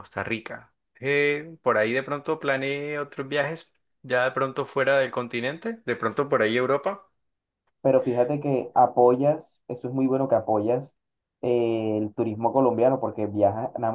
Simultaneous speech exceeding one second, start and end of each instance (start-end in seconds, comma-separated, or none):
none